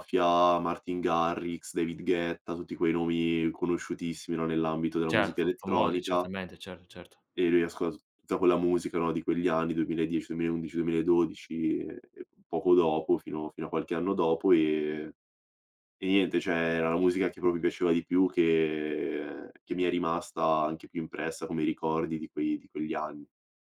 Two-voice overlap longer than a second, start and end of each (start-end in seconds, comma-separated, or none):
5.1-6.3